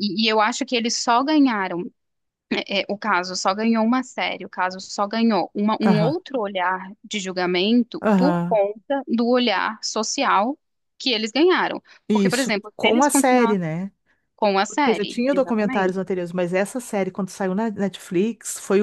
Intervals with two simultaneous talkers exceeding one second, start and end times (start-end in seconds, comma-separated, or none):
12.1-13.6, 14.7-15.9